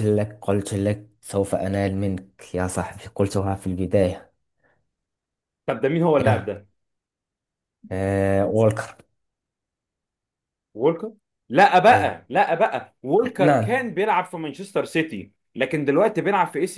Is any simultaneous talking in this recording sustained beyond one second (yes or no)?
no